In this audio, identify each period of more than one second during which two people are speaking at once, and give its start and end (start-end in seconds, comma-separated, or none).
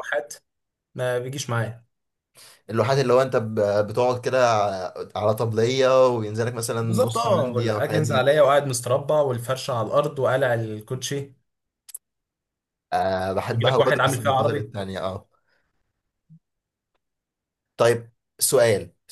6.8-8.3, 13.5-14.7